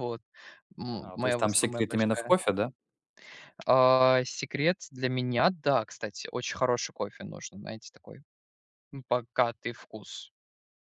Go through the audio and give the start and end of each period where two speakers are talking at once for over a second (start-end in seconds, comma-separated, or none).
1.0-2.4